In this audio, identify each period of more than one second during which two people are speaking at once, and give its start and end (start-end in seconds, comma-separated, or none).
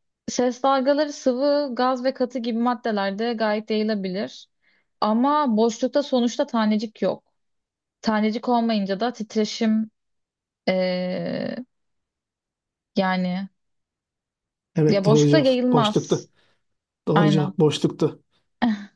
14.9-16.3